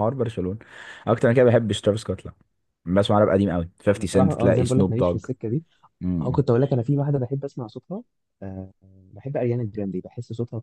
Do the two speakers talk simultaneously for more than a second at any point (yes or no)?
yes